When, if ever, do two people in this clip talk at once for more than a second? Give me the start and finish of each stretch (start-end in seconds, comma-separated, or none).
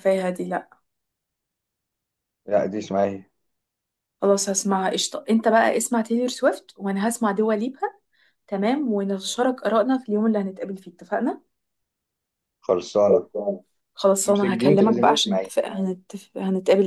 14.2-15.5